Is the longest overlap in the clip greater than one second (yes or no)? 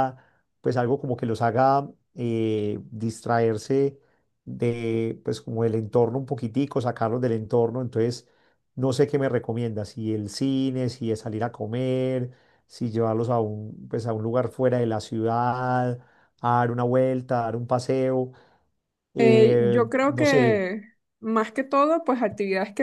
yes